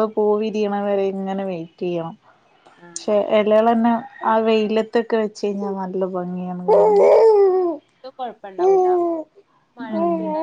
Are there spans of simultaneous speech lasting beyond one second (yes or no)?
no